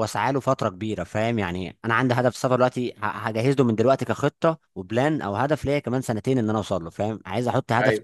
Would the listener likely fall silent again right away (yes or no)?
yes